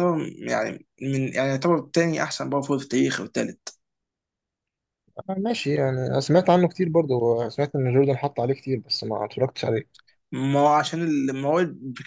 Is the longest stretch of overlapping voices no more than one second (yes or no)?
yes